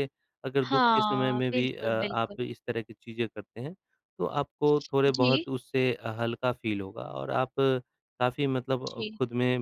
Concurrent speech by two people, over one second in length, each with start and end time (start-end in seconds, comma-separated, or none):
0.6-2.4